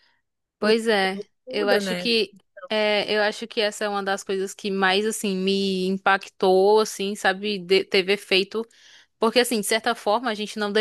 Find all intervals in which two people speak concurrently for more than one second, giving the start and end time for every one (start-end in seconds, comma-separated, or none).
0.6-2.1